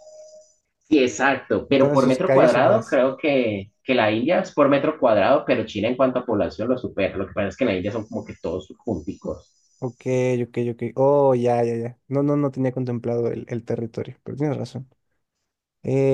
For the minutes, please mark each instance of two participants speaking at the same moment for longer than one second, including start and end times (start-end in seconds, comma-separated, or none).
1.7-3.0